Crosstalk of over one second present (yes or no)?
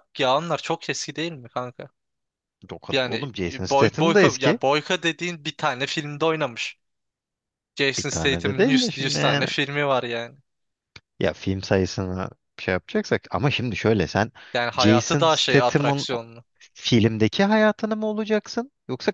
yes